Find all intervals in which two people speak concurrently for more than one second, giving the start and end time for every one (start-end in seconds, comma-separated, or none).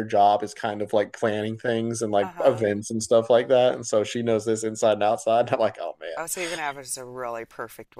none